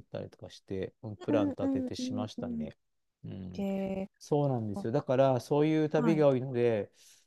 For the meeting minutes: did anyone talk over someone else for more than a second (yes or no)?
yes